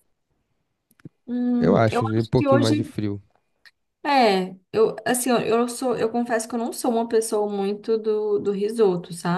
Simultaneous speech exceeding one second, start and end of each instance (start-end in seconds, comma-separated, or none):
1.6-2.9